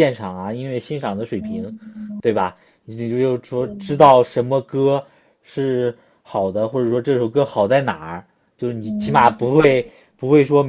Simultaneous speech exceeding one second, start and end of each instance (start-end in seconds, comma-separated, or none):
none